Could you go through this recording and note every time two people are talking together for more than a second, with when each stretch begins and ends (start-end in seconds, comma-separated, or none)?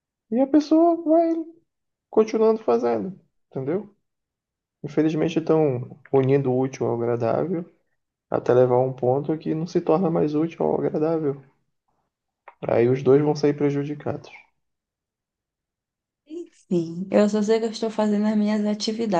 none